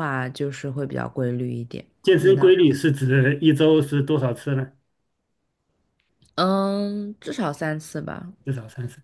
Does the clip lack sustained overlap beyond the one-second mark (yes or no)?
yes